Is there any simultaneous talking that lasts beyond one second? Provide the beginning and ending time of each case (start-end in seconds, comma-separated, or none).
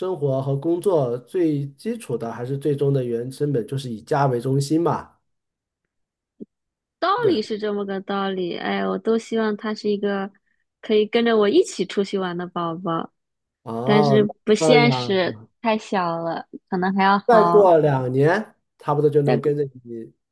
13.8-15.2